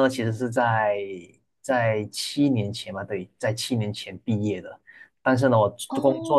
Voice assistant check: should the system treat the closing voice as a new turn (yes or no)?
no